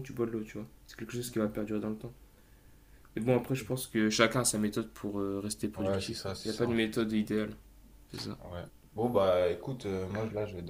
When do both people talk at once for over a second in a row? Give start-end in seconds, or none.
5.7-7.1